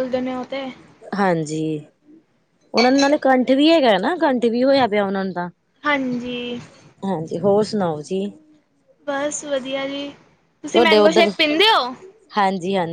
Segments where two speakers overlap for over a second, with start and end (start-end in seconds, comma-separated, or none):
none